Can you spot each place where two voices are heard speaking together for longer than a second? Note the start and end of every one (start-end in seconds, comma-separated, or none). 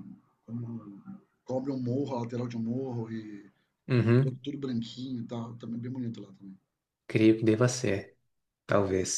none